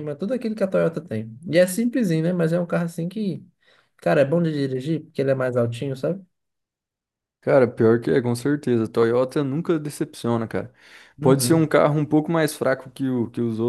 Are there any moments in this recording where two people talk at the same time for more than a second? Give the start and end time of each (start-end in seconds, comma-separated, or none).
none